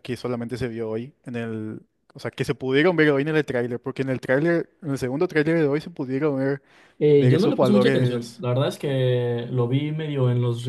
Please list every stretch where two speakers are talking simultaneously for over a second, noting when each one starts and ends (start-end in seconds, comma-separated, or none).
7.2-8.4